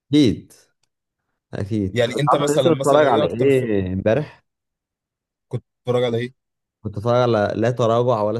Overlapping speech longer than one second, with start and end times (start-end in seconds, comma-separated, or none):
1.9-3.7